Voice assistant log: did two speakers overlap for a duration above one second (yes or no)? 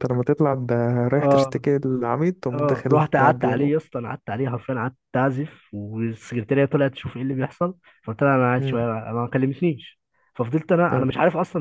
yes